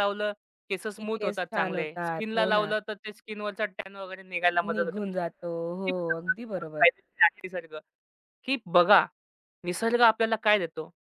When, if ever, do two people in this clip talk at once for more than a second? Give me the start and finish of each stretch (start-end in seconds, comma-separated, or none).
1.0-2.7